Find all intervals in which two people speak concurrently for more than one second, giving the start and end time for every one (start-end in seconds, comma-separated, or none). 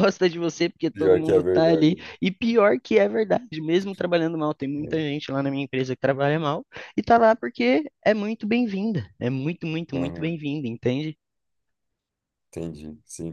0.9-2.1